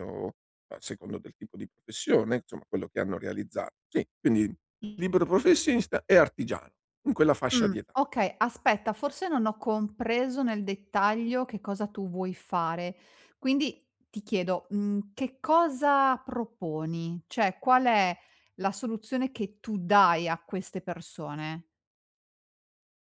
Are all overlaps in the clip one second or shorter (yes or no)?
yes